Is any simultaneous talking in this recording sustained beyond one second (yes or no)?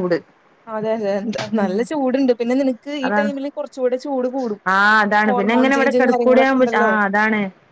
yes